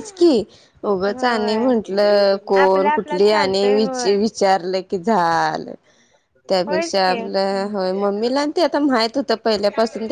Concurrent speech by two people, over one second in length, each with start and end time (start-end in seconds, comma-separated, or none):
2.6-4.1